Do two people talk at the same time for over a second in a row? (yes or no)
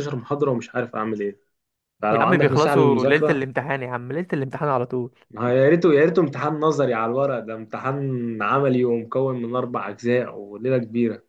yes